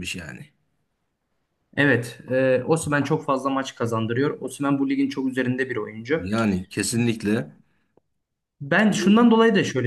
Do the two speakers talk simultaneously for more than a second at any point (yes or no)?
no